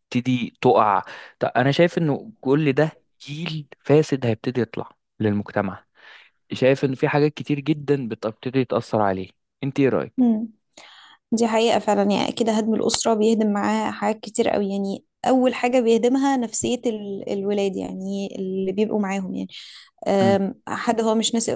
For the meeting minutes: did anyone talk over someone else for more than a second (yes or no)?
no